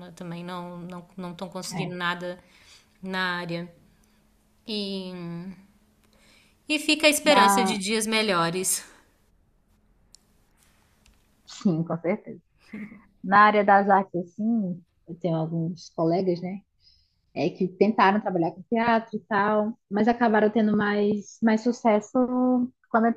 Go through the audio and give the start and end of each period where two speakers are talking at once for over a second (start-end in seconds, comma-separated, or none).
none